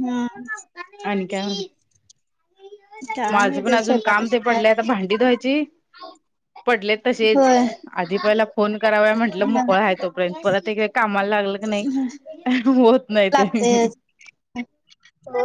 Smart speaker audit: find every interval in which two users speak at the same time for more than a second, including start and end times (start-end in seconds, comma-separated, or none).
3.3-4.8